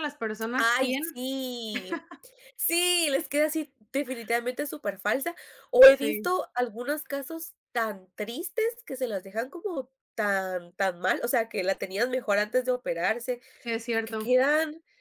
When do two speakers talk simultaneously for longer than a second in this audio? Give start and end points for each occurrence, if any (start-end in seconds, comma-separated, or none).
none